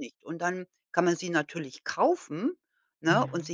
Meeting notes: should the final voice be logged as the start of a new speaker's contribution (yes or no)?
no